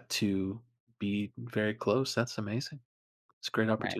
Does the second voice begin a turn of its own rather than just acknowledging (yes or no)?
yes